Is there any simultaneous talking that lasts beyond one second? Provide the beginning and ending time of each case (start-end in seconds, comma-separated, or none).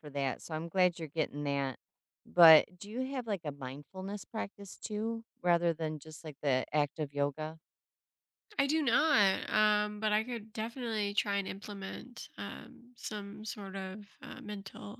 none